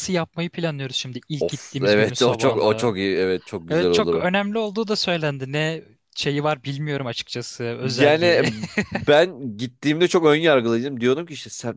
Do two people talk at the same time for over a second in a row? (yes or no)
yes